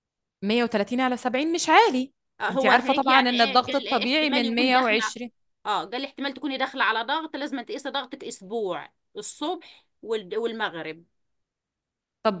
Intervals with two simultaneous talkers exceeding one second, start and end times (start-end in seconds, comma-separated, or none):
2.5-5.1